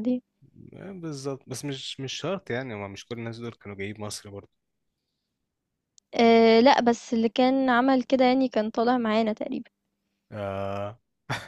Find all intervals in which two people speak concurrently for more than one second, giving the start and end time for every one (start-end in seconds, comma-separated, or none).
none